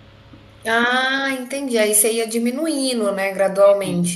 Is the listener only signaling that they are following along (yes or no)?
no